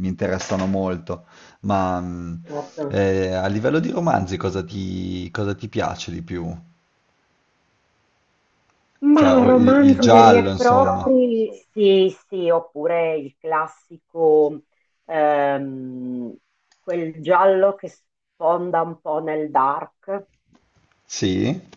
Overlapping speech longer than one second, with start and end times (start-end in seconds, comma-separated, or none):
9.1-11.1